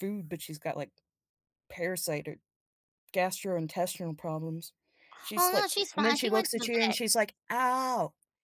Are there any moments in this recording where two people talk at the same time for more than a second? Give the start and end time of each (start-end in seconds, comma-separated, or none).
5.4-7.0